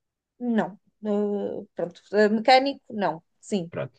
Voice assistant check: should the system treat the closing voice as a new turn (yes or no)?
yes